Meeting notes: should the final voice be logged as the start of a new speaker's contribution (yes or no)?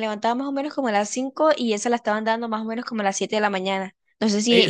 yes